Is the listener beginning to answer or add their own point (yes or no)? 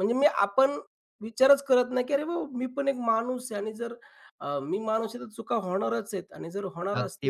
yes